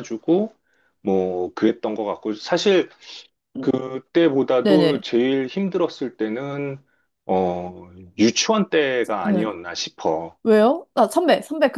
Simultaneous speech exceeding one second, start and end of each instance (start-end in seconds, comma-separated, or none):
none